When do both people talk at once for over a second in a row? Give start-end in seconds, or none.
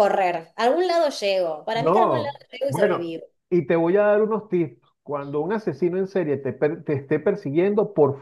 1.7-3.1